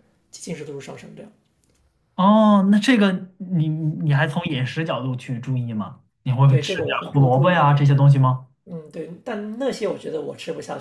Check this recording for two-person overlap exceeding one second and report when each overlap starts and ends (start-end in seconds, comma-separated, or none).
6.5-8.1